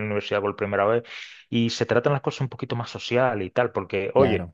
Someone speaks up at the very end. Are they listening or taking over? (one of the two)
listening